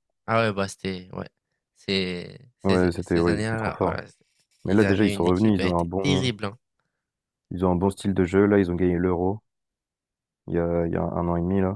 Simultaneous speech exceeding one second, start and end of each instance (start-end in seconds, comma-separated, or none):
2.6-4.0, 4.6-6.3